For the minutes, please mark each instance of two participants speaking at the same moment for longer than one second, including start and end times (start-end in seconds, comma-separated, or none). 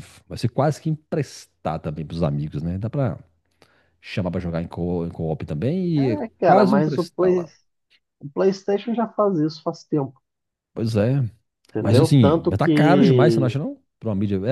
6.0-7.5, 11.8-13.5